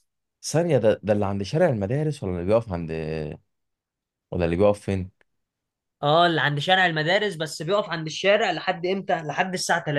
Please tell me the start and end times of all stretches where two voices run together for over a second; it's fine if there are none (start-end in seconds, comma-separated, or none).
none